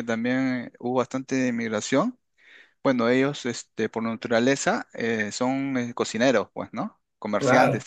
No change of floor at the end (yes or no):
yes